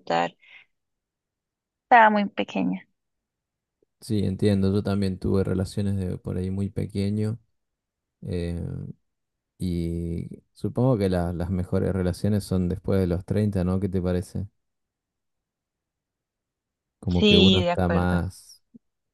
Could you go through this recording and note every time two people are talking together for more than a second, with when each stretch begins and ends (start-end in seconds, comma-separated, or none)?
17.1-18.4